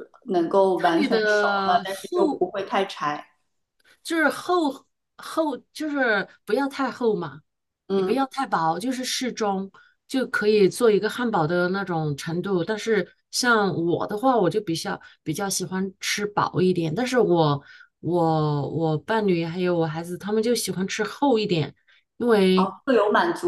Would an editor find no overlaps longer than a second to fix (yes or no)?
no